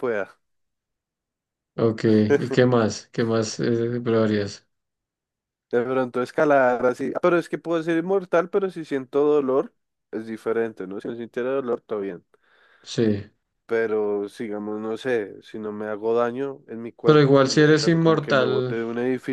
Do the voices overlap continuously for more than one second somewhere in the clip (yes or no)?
yes